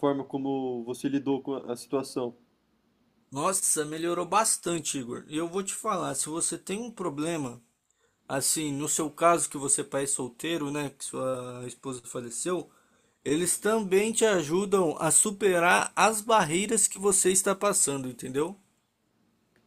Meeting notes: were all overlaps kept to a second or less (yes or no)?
yes